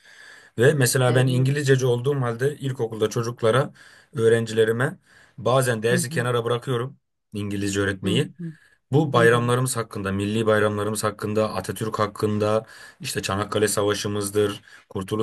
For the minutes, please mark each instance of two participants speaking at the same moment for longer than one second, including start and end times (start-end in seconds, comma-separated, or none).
none